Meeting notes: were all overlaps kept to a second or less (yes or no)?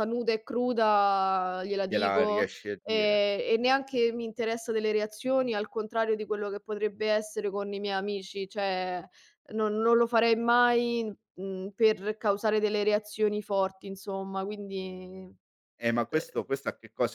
no